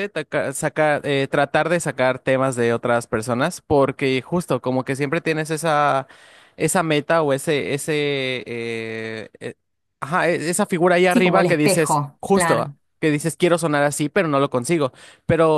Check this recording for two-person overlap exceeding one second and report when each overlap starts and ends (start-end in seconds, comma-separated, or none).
11.1-12.8